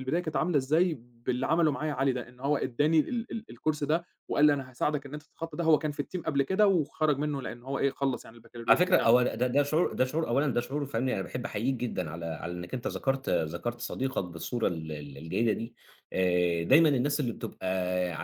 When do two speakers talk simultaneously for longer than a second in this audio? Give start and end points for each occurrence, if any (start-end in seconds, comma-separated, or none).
none